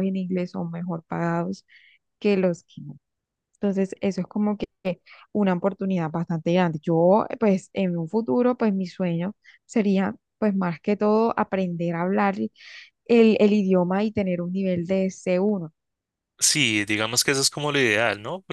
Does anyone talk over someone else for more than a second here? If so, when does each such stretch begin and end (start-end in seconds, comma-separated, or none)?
none